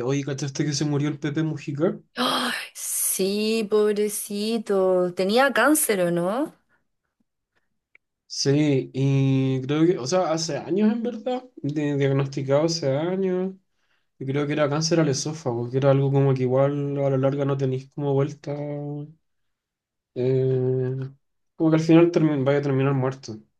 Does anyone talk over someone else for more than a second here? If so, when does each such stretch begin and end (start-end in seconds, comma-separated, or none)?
none